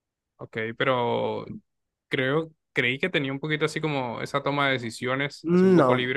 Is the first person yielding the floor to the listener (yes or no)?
yes